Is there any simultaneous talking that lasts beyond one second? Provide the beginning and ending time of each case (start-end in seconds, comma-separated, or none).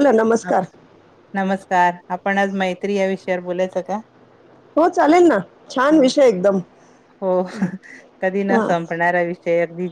none